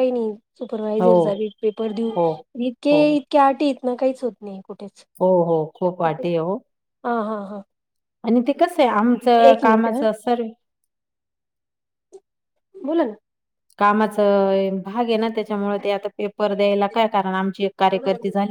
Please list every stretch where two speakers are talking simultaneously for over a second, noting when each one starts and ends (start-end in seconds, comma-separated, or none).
none